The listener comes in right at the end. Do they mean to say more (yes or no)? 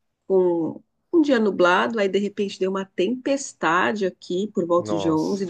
no